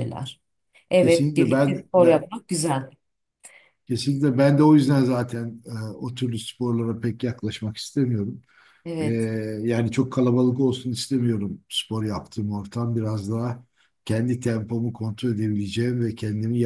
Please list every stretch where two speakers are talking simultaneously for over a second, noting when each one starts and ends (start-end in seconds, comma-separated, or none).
1.0-2.2